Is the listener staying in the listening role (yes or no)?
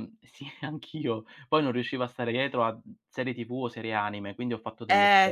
no